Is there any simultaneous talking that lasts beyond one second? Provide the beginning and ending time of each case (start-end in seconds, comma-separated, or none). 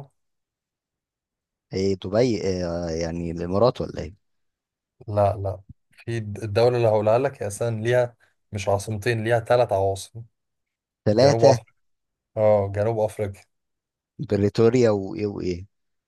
none